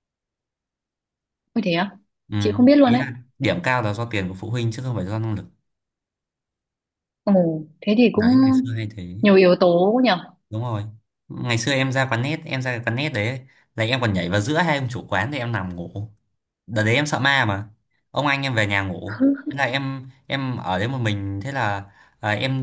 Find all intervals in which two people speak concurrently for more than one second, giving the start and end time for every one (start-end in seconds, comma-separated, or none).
none